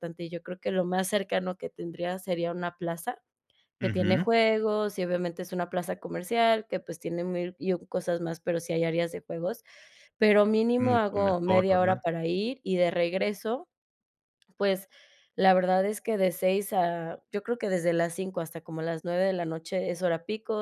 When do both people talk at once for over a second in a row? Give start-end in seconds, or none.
10.8-12.0